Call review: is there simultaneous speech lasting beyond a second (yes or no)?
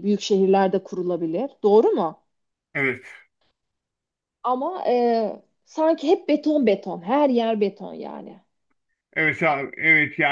no